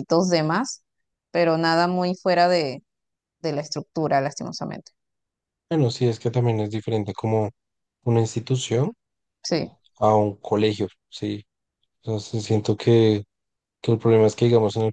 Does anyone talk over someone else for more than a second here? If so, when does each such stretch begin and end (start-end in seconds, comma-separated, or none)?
none